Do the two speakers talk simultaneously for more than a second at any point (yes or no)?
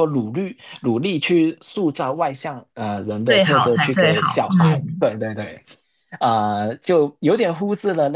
yes